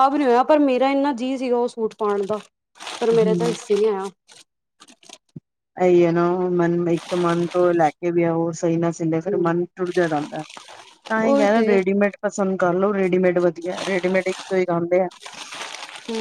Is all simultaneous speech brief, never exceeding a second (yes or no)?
yes